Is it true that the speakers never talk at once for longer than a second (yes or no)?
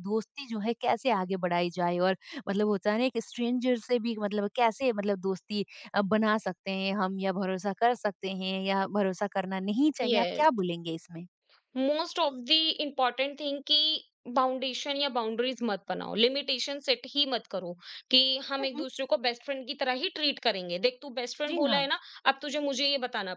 yes